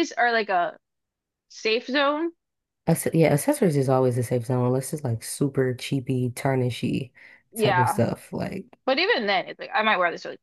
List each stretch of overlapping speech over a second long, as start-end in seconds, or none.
none